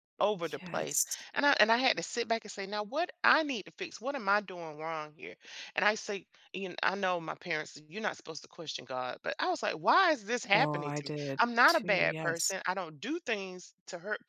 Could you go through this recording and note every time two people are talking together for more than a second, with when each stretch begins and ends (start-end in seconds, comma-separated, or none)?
10.5-12.5